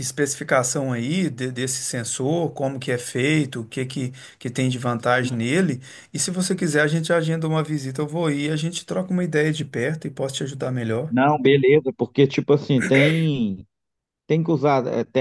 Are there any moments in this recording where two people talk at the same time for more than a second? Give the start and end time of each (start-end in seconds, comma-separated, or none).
none